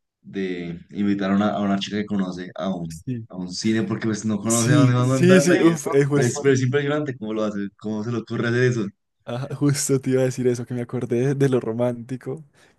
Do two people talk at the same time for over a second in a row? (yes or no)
yes